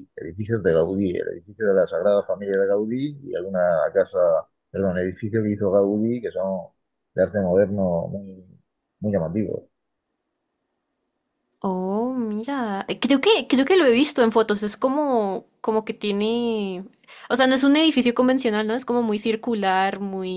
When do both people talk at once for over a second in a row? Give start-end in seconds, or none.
none